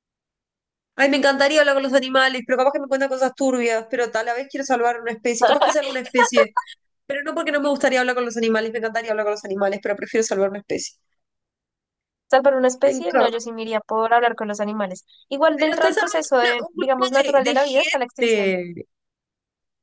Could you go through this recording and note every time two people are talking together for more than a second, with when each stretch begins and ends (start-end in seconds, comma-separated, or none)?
15.6-18.5